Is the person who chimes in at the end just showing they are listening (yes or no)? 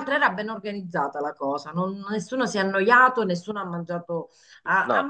yes